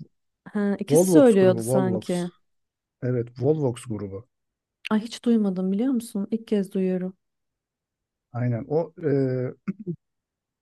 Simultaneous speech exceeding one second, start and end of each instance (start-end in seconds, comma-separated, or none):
0.9-2.2